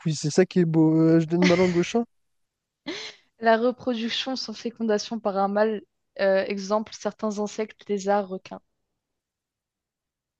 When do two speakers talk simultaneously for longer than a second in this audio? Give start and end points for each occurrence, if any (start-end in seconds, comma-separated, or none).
none